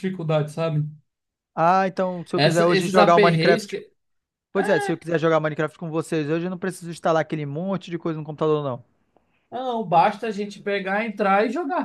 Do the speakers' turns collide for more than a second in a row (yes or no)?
yes